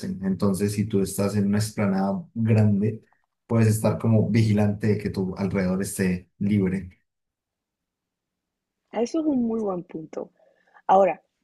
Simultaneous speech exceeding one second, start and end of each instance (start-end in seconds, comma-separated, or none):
none